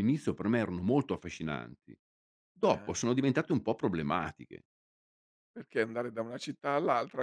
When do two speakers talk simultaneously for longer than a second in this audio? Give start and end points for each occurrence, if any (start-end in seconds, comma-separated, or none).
none